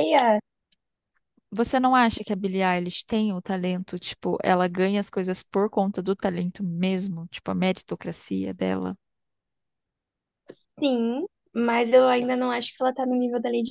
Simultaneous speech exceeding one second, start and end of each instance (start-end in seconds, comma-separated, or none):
none